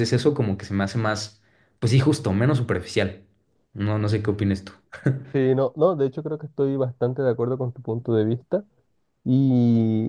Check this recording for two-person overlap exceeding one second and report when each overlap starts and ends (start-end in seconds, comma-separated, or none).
none